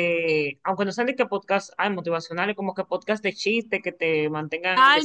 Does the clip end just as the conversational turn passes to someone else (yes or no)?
yes